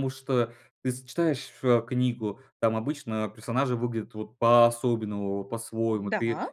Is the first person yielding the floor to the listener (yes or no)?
no